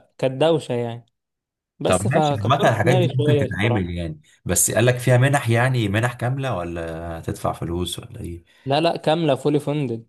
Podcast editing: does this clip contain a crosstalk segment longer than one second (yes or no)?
yes